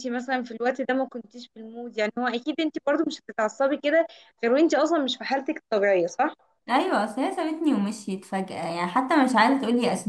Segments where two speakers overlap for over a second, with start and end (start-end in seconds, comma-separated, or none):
none